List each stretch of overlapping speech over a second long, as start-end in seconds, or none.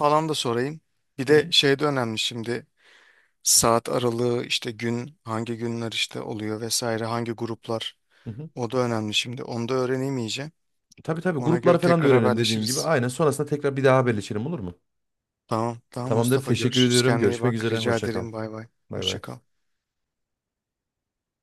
11.4-12.9, 16.1-18.3